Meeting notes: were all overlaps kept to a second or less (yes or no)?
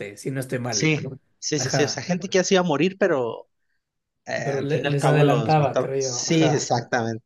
no